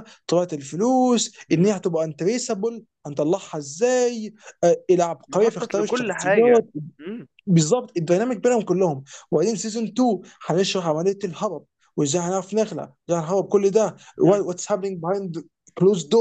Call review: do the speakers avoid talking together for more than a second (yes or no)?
no